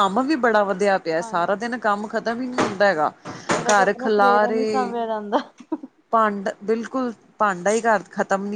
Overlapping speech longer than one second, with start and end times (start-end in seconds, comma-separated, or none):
3.7-4.9